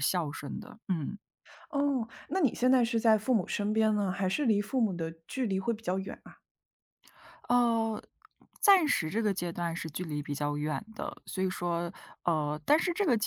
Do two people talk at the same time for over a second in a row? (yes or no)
no